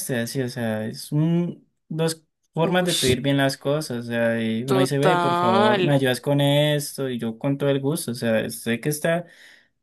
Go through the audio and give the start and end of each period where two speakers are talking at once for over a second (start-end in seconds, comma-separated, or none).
4.7-5.9